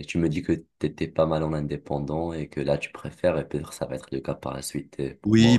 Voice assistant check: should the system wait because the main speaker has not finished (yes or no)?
no